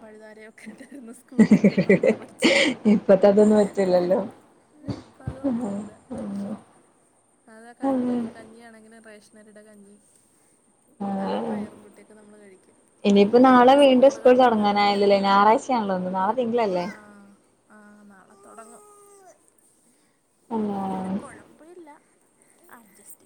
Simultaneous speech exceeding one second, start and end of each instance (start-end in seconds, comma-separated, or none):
13.3-14.8